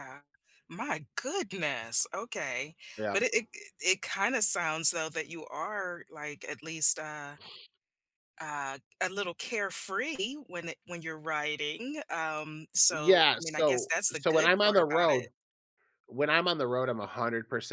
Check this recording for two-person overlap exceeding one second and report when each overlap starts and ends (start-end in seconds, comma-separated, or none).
12.9-15.3